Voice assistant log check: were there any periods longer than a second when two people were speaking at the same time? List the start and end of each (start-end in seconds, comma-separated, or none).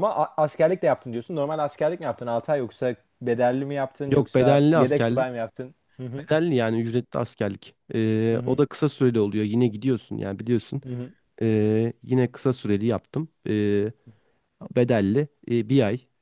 4.1-5.4